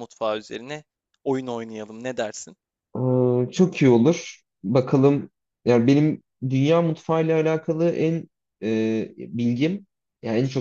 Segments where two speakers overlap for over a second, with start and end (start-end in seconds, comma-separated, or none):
none